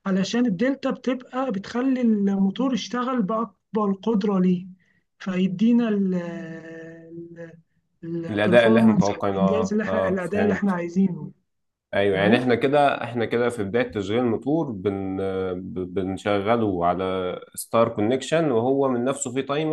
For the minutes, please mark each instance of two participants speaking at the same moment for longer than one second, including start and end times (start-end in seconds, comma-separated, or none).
8.3-10.8